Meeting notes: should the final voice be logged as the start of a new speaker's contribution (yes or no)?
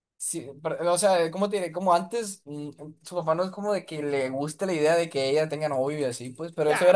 yes